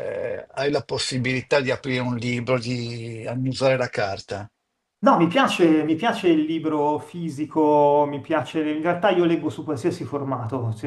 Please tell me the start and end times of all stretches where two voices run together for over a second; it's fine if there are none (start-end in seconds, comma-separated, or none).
none